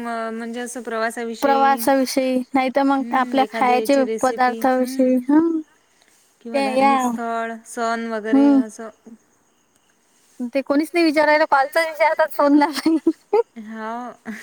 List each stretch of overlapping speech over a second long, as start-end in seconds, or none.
3.0-5.2